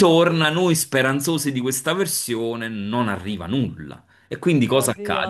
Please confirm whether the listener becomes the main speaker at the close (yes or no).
no